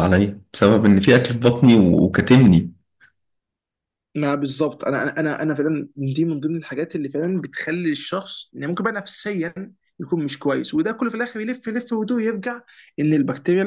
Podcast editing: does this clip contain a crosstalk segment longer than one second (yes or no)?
no